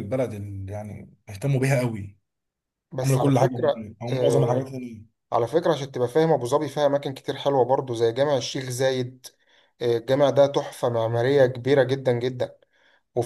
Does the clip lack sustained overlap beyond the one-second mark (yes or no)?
no